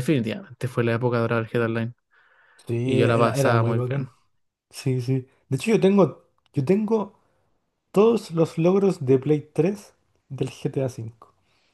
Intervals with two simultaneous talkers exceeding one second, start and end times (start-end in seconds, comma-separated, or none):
2.8-4.1